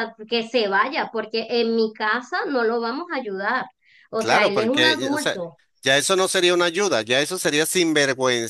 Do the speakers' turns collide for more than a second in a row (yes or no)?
yes